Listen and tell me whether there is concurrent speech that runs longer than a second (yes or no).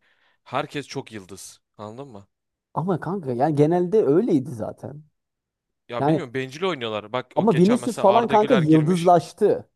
yes